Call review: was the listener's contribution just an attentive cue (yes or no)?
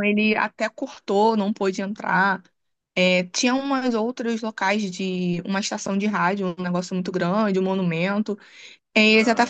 yes